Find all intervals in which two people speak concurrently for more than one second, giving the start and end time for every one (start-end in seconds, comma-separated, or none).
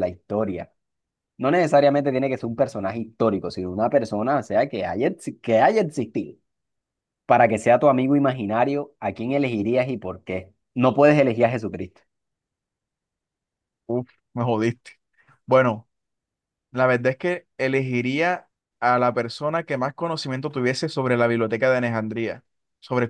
none